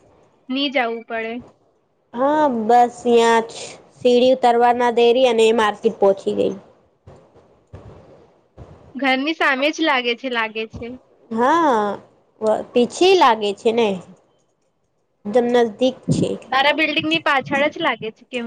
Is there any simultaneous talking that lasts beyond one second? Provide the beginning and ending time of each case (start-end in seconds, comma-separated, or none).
none